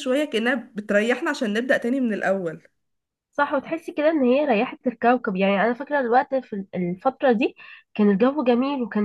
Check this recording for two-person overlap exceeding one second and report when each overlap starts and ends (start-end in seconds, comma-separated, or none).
none